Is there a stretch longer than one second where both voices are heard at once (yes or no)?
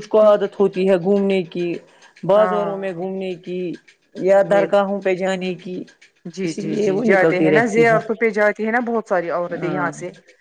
yes